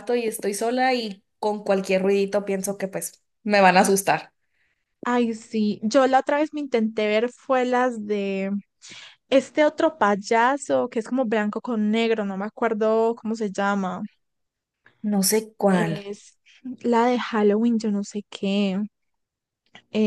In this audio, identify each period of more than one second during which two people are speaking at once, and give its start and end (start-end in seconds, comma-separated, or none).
none